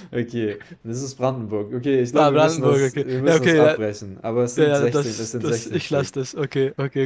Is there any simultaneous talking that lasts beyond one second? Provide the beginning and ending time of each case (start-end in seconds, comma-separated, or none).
2.1-3.8, 4.6-6.1